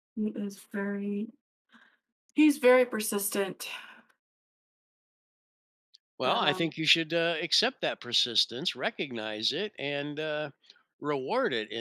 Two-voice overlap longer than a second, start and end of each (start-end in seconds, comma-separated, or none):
none